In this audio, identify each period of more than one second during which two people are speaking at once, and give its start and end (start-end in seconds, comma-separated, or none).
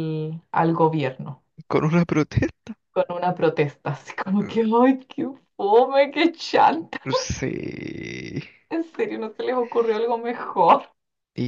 none